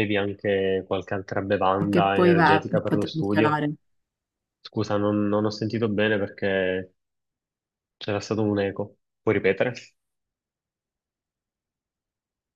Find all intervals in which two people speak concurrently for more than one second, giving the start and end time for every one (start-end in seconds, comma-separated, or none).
1.8-3.6